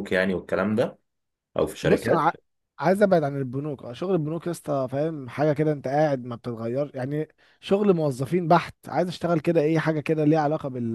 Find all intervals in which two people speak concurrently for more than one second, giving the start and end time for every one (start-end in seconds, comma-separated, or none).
none